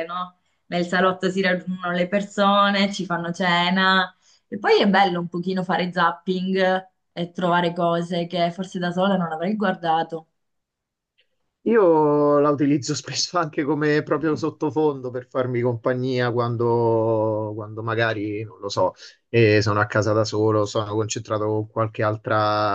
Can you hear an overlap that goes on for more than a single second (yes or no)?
no